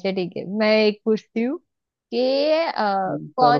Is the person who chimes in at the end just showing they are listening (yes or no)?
yes